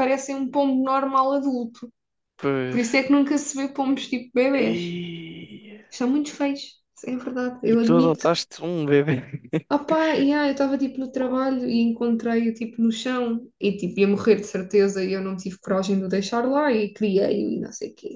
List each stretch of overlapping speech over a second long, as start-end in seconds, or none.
none